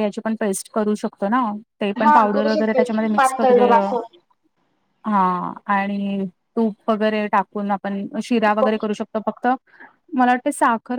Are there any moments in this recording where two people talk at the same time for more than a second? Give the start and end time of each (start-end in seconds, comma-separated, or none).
2.0-3.9